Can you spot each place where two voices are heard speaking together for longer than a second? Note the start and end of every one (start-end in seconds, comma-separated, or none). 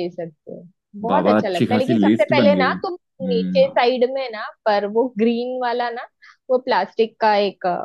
1.1-3.8